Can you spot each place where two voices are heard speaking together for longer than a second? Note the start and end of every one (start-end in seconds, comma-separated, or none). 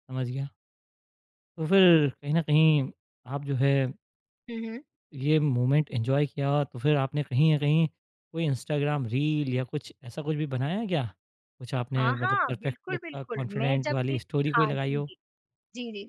12.0-15.1